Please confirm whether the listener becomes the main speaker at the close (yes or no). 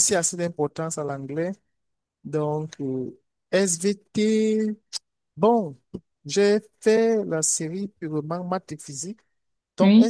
no